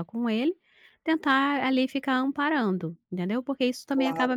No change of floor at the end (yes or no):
no